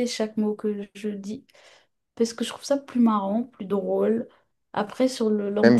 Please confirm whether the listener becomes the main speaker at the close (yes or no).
yes